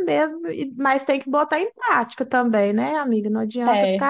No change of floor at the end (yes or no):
yes